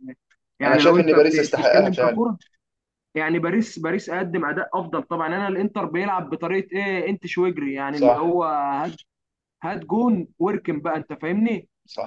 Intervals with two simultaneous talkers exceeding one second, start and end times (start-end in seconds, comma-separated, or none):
0.6-2.3